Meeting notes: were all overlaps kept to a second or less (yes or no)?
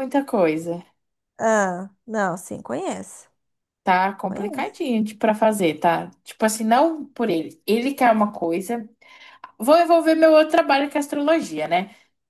yes